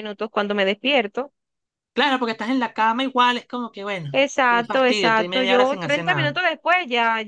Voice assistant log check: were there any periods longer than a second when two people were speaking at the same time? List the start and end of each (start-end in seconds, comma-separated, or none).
4.5-6.4